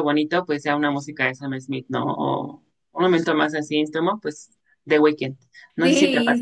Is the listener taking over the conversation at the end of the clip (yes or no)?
yes